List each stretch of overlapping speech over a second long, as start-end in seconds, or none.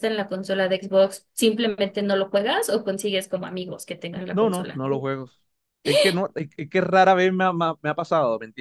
none